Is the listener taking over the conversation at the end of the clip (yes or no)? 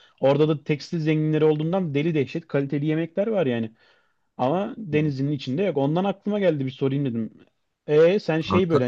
no